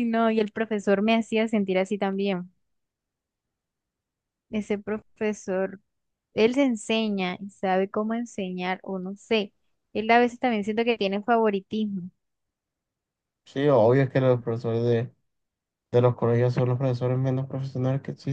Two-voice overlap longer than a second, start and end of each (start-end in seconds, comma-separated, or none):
none